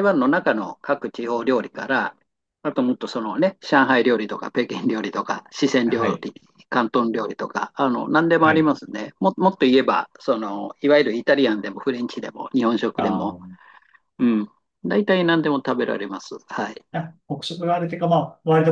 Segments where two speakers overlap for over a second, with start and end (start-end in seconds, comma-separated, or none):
none